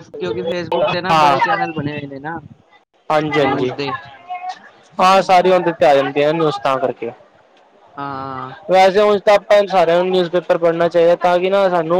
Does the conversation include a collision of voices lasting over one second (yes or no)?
no